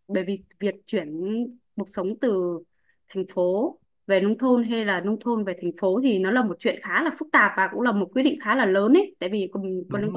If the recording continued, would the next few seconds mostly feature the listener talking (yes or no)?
no